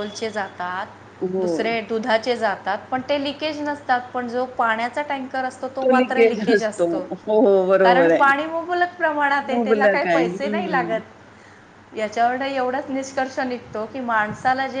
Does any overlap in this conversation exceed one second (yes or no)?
yes